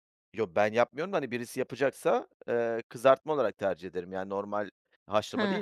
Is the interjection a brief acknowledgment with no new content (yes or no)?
no